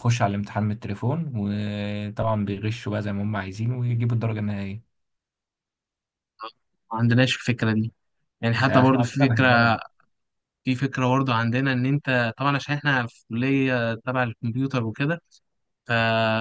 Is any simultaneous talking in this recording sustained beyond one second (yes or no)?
yes